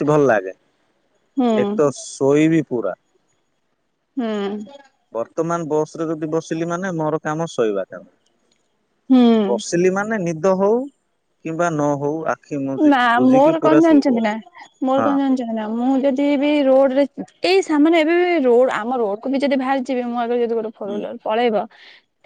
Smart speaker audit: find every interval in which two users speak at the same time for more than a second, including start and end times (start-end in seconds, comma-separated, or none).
none